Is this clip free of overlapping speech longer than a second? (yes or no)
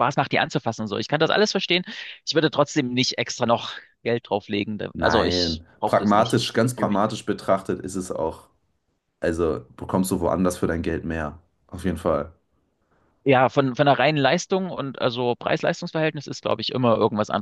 no